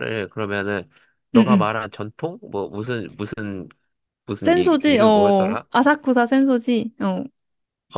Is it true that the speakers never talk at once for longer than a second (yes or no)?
no